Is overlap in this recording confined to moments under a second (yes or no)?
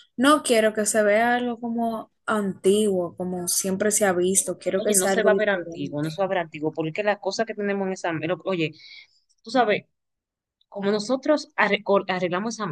no